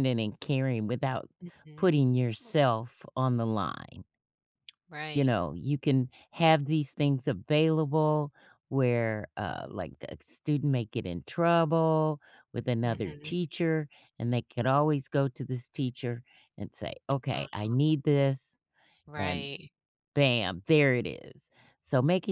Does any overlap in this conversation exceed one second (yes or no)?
no